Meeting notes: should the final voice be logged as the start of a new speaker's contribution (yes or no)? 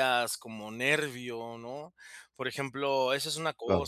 no